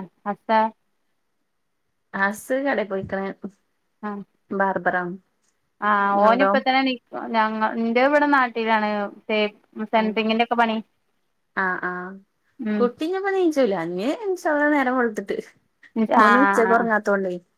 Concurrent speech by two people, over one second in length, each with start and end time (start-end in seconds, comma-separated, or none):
none